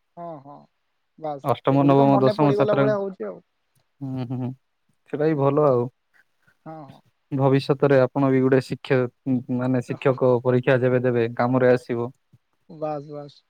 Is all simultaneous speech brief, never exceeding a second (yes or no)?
no